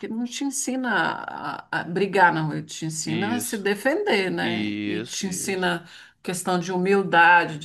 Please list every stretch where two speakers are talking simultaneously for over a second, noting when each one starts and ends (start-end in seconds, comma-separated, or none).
4.4-5.7